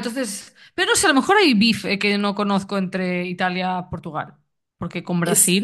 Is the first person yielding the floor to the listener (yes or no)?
no